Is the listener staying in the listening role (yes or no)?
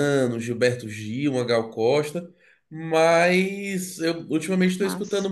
yes